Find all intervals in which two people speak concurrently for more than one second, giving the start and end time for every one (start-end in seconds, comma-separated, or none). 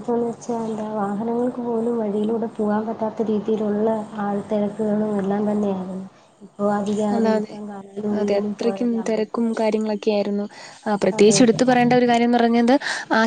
8.2-9.7